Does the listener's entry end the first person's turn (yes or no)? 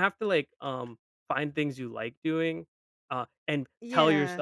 no